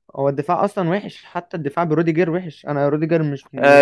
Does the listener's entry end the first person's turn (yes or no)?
yes